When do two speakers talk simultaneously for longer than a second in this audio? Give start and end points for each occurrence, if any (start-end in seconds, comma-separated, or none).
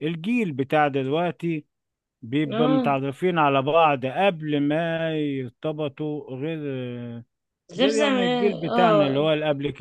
7.8-9.3